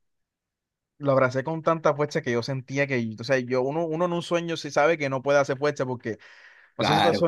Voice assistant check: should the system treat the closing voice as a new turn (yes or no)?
no